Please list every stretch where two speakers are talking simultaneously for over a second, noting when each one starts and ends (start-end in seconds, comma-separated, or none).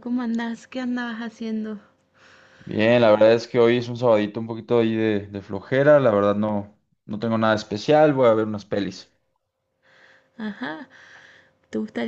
none